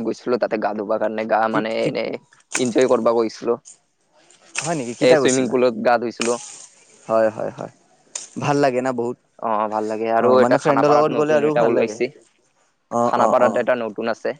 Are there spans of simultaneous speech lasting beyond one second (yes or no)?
yes